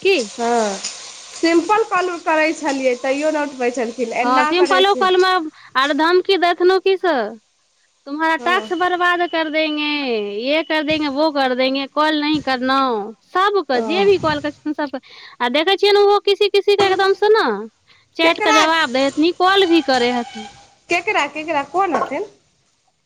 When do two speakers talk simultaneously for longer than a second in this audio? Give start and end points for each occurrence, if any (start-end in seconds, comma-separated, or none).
none